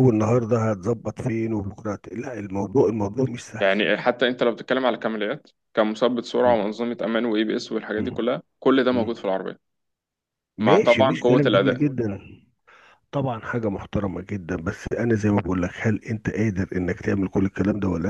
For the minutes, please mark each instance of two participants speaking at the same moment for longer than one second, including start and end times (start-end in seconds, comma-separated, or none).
10.6-11.8